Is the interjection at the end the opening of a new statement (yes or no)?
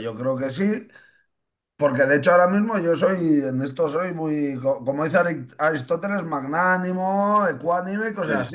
no